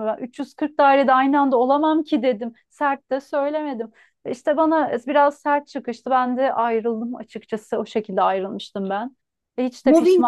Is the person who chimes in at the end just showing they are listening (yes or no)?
no